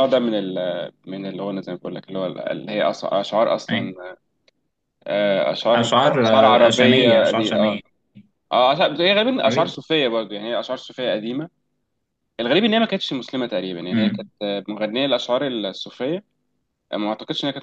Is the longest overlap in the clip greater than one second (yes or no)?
yes